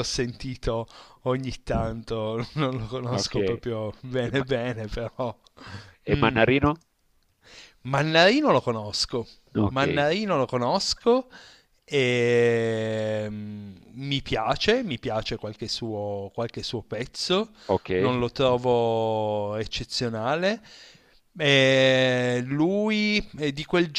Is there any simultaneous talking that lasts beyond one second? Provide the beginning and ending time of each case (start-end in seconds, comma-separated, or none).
none